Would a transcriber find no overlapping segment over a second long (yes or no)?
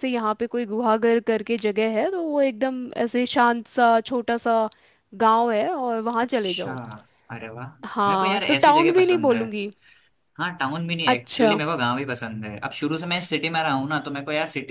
no